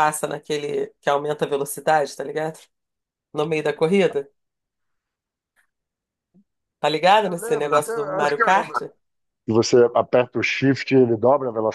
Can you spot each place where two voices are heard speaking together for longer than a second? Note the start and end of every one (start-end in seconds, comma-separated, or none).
7.2-8.7